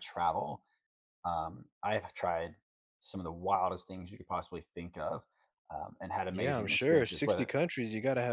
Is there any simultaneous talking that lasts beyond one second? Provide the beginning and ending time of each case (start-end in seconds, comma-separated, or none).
6.3-7.5